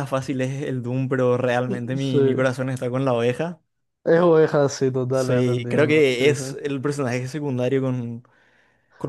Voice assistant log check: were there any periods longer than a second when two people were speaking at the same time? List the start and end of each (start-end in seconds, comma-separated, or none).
5.1-6.4